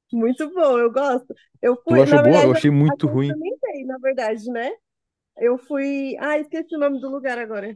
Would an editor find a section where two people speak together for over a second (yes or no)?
yes